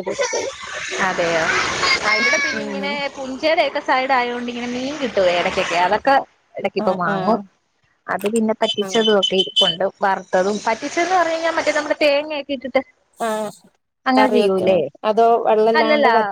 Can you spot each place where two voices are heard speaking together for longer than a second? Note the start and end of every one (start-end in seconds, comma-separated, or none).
none